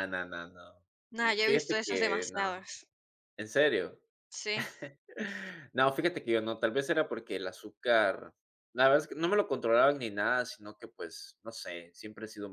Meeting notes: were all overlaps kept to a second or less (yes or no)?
no